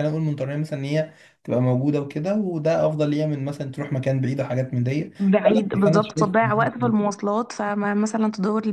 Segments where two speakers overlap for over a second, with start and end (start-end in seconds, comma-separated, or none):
5.5-7.0